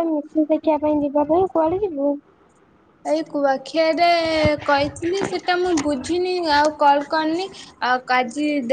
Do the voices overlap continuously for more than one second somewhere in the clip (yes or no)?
no